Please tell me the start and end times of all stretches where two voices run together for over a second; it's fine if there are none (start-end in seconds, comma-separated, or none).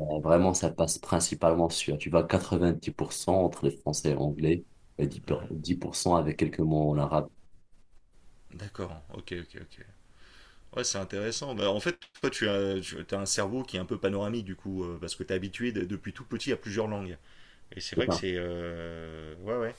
none